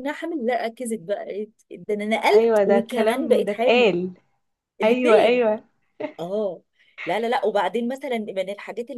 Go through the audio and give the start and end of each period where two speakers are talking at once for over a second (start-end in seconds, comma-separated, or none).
2.3-3.9